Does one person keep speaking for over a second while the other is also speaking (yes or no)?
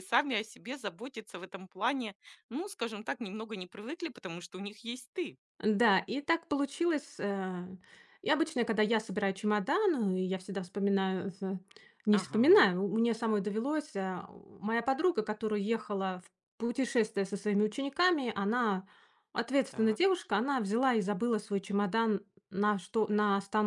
no